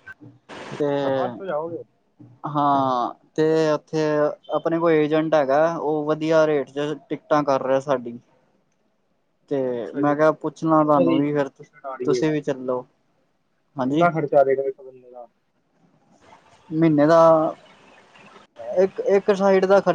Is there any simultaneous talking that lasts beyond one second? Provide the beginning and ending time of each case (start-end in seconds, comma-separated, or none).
9.7-11.2